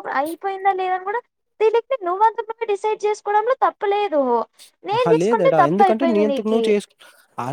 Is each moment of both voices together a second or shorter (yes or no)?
no